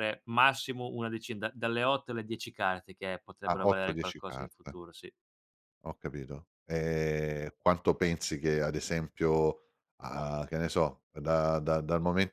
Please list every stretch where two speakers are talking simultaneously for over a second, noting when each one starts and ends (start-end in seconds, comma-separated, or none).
3.5-4.8